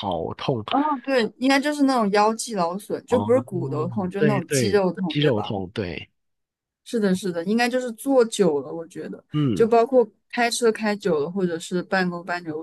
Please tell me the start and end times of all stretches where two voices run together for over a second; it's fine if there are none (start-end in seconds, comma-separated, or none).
4.2-5.5